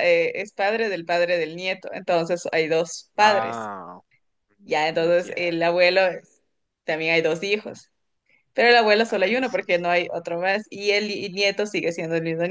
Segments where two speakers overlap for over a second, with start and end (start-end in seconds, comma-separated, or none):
4.6-5.9